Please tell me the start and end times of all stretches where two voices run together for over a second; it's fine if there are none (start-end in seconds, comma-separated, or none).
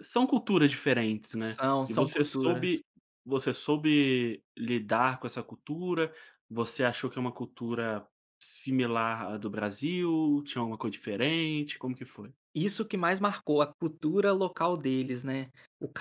1.4-2.8